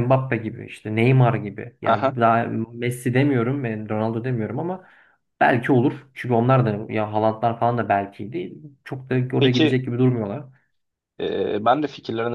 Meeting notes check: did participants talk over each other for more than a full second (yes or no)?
no